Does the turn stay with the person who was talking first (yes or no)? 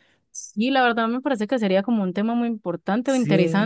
yes